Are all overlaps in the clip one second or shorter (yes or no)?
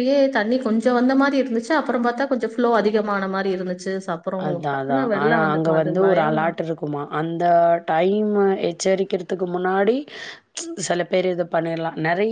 no